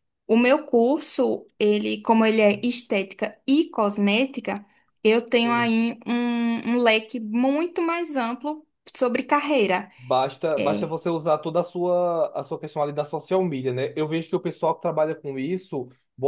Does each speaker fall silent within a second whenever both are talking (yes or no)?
yes